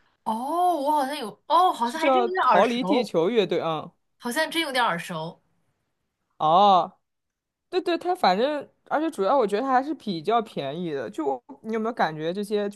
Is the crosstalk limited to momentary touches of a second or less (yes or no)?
no